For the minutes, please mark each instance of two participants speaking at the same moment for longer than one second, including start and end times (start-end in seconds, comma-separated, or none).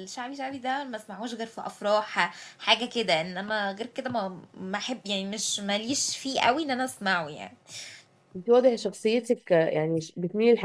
none